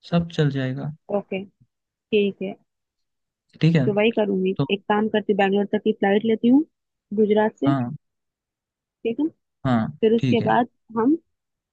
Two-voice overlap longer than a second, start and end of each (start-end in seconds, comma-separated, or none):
none